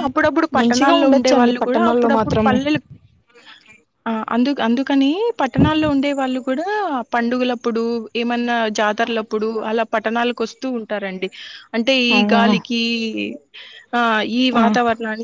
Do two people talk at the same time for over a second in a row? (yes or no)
yes